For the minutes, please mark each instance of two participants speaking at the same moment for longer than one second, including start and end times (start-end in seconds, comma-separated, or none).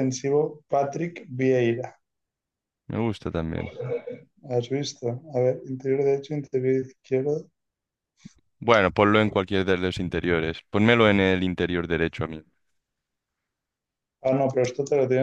none